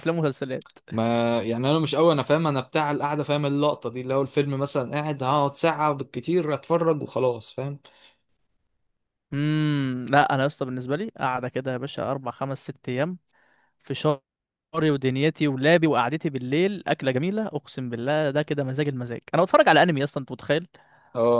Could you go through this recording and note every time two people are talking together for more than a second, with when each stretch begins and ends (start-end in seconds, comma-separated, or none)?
none